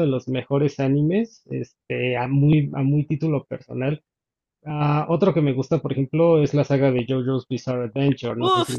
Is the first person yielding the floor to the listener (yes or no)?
yes